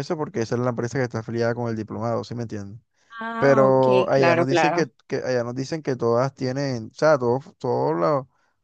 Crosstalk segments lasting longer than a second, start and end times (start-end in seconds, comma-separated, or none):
3.4-4.8